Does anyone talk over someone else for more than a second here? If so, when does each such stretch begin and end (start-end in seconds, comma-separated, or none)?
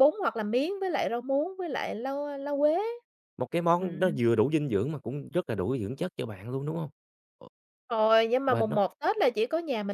none